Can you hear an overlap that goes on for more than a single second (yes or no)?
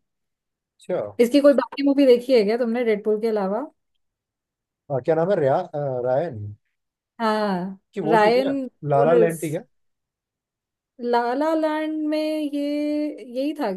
yes